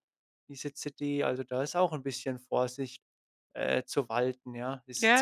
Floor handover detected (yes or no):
yes